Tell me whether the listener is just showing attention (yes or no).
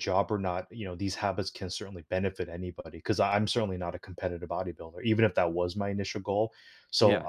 yes